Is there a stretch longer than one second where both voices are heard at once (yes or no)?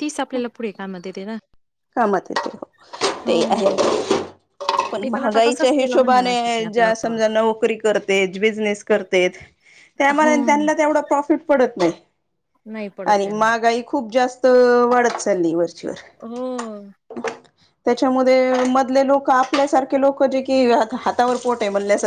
yes